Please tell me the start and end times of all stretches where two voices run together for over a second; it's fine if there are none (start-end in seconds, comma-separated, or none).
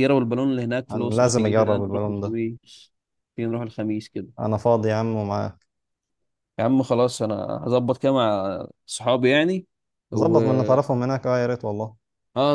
0.9-2.4